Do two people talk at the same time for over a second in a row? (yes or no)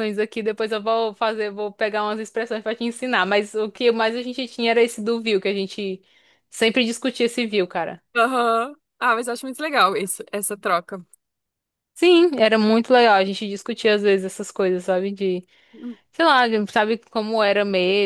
no